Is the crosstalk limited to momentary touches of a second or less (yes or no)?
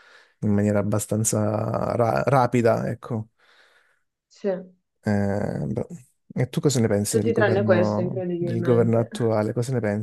no